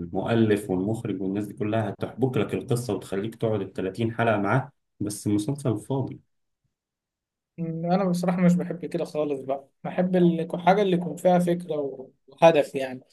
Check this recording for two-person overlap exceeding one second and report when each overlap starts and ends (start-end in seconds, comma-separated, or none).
none